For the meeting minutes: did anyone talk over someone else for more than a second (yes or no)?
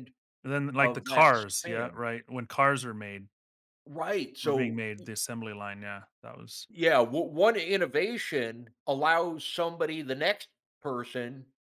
yes